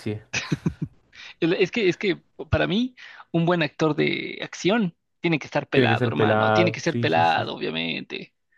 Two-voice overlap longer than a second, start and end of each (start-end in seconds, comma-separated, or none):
5.7-7.5